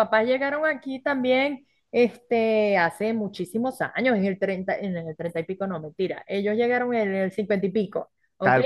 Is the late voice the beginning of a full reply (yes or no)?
no